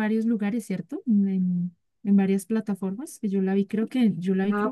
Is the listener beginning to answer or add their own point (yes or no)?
yes